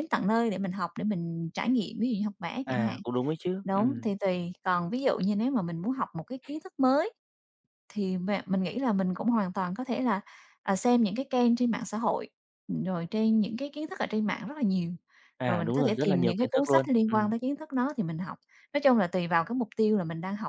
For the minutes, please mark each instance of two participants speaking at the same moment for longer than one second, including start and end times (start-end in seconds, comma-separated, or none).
15.4-17.3